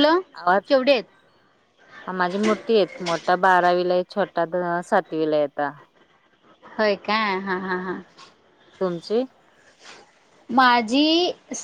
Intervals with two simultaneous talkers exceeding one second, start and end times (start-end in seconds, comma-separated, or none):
none